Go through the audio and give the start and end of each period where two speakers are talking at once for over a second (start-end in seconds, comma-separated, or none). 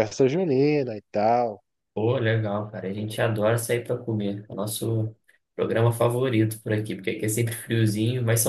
none